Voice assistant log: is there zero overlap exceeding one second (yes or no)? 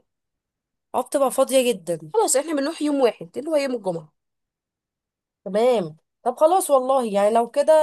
yes